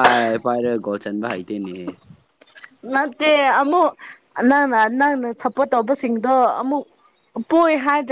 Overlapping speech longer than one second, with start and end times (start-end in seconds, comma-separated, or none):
none